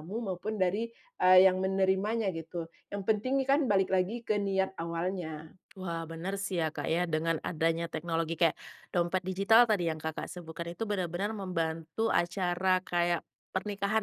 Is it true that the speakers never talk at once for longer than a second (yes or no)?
yes